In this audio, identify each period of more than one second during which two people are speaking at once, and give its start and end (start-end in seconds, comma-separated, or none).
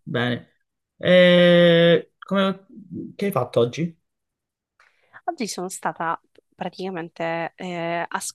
none